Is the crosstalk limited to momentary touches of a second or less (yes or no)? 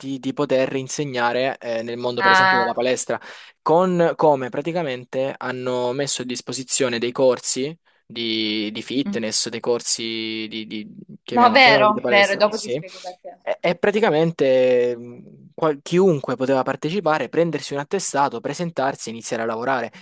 no